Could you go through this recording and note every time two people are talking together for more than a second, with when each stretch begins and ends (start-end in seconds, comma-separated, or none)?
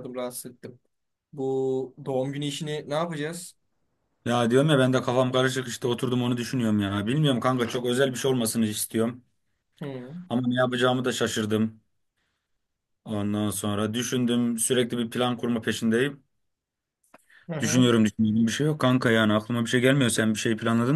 none